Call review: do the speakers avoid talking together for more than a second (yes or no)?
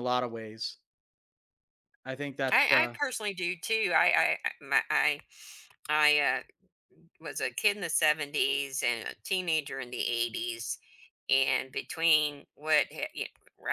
yes